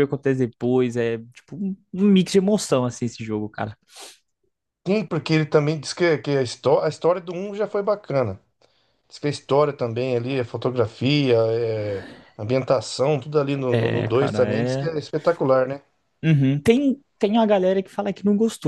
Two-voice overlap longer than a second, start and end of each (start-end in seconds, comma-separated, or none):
13.7-14.9